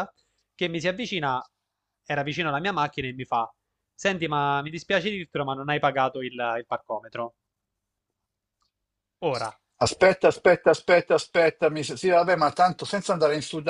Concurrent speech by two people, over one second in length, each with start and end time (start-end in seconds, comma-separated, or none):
none